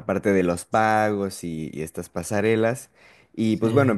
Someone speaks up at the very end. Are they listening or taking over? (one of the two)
listening